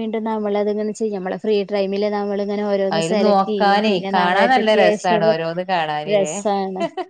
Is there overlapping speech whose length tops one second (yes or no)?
yes